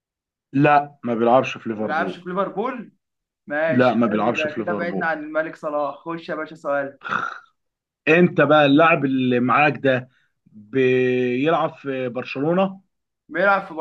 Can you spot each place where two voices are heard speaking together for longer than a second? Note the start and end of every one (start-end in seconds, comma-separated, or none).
3.7-5.1